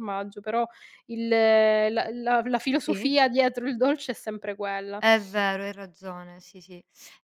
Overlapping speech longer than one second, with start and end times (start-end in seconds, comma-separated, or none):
none